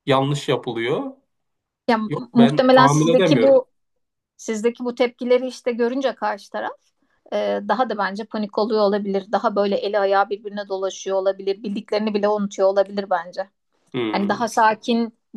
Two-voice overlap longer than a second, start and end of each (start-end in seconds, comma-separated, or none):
2.1-3.6